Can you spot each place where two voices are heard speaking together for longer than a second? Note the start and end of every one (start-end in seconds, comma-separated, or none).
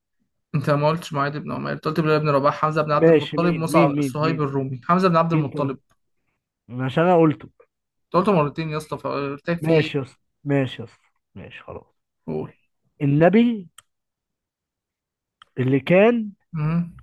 3.0-4.4